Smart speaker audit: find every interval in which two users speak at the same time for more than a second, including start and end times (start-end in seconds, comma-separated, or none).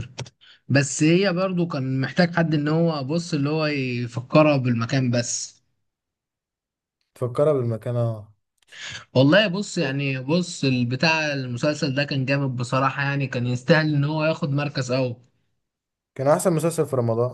none